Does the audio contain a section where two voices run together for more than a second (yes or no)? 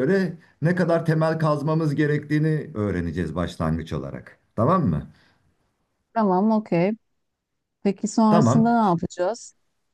no